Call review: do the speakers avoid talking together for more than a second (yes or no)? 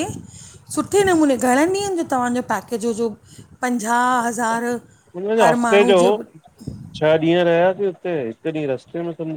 yes